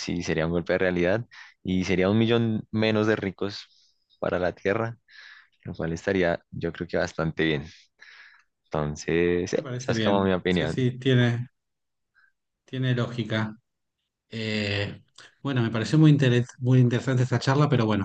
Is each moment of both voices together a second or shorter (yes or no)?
no